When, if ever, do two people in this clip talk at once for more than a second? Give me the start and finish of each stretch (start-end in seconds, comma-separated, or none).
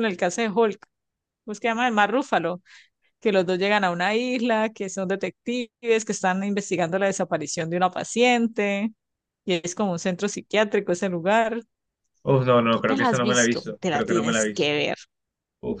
12.7-14.7